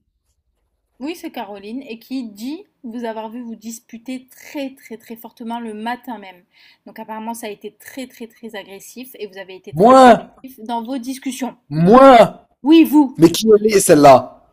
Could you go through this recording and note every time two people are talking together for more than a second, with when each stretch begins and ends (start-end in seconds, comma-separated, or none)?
none